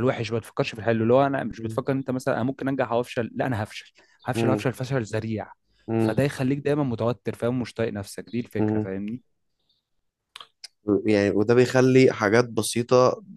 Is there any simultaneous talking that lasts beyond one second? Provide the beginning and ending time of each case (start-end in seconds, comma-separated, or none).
none